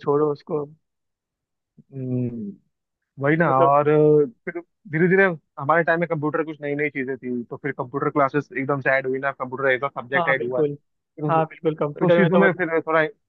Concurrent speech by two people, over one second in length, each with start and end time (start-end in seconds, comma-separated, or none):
11.3-12.6